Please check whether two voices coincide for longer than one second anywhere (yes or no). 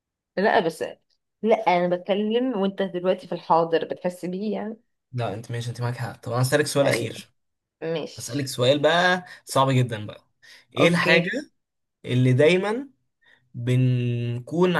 no